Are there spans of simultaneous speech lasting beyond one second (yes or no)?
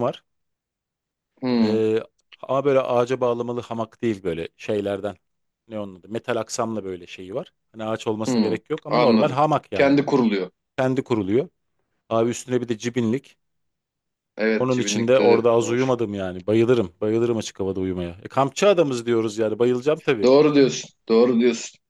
yes